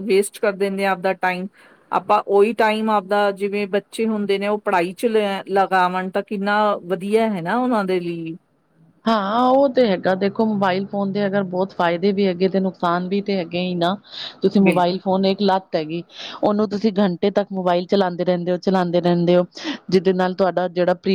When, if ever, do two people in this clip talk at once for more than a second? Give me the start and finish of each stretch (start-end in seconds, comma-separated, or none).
none